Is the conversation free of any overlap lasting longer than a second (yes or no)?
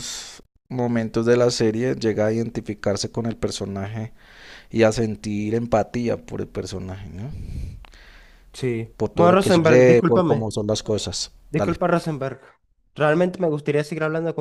no